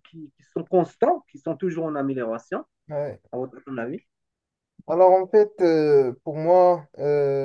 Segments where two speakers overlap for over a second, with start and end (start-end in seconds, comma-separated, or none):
none